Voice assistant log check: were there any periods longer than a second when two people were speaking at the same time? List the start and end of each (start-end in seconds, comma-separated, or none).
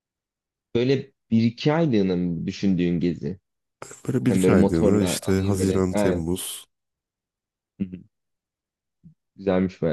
4.3-6.2